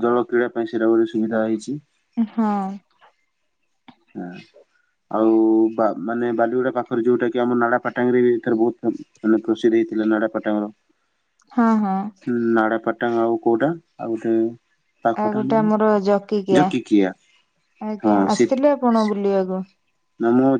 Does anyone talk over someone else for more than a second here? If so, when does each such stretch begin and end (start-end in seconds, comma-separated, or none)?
none